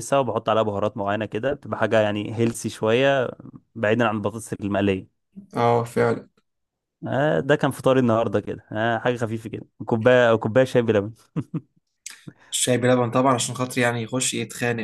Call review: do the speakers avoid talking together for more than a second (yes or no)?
yes